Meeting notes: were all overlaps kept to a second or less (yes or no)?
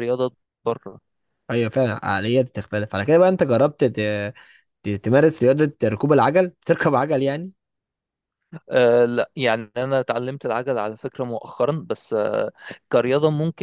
yes